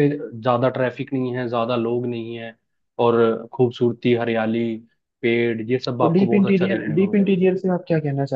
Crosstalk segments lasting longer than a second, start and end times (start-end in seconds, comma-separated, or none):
6.0-7.3